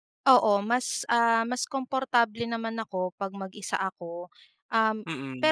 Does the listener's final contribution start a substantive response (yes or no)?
no